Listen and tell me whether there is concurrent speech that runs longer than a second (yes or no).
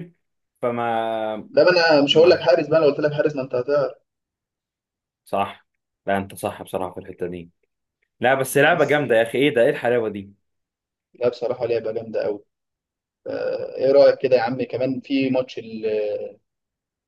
no